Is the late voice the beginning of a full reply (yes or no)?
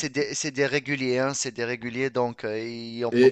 yes